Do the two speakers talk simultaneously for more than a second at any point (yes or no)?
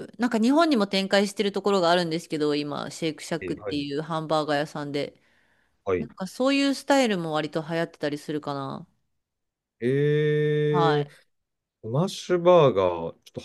no